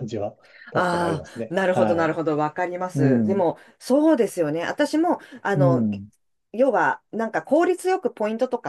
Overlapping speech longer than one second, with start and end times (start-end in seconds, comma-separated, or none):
0.7-2.1